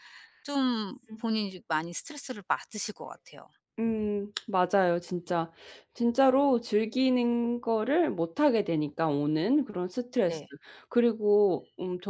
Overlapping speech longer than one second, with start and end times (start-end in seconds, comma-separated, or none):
none